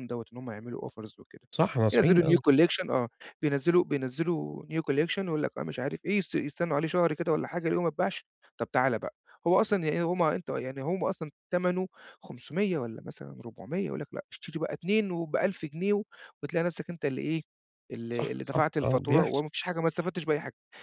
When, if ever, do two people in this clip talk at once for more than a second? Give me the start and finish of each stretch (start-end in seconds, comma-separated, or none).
18.1-19.4